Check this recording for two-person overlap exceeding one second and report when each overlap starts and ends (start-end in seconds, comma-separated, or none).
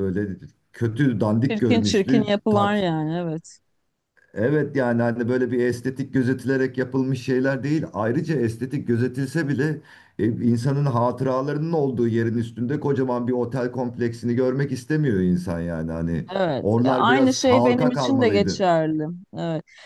1.5-2.8, 16.6-18.6